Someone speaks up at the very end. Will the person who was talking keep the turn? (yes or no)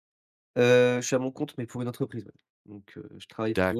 no